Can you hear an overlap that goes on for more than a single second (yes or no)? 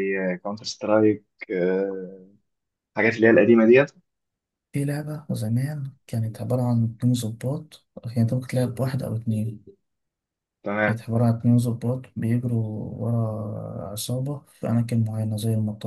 no